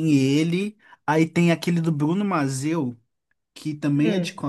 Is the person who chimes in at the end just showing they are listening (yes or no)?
yes